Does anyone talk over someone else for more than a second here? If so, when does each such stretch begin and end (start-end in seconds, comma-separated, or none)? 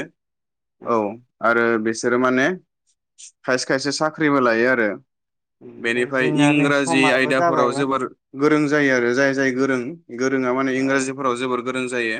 5.9-7.9